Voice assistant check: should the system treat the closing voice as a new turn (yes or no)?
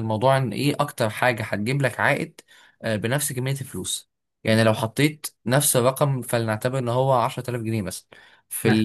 no